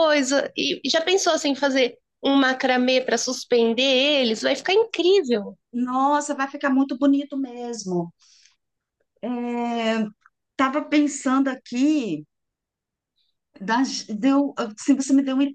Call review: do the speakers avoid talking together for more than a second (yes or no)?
yes